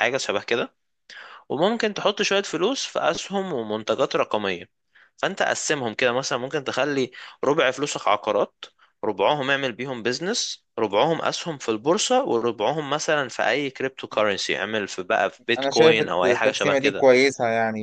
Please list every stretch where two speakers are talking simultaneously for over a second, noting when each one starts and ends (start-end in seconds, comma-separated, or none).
15.6-17.1